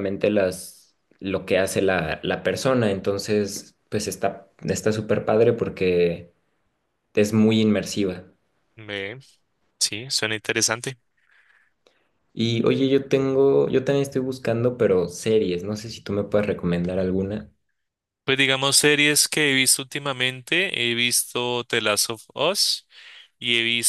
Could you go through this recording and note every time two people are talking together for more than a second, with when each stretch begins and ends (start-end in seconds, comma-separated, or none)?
none